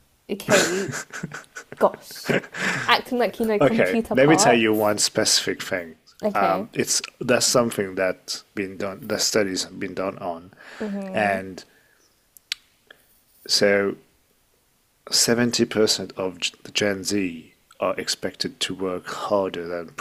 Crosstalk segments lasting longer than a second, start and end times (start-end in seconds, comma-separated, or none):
3.6-4.9